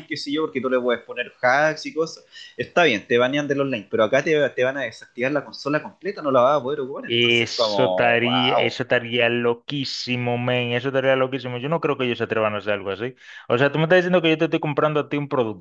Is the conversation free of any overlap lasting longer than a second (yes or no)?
no